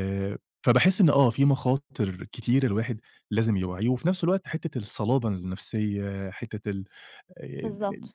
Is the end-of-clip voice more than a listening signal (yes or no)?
yes